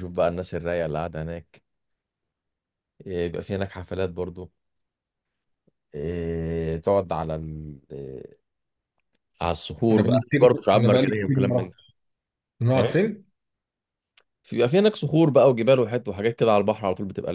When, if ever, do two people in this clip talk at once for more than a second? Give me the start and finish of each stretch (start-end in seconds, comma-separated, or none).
9.9-11.7